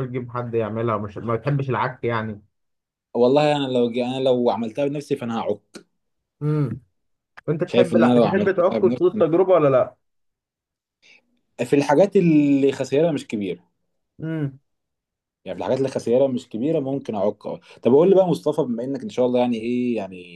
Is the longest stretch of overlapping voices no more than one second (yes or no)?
no